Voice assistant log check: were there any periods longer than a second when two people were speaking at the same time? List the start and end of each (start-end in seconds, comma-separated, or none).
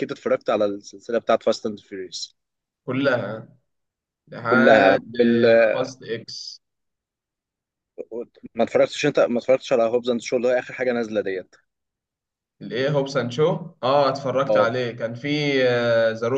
none